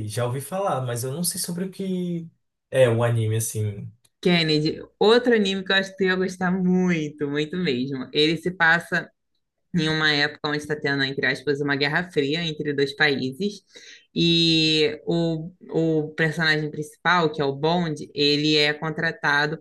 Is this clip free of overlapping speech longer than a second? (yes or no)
yes